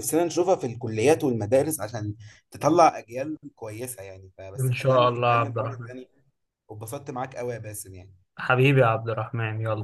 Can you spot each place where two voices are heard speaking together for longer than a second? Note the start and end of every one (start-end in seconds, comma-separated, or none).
4.6-5.9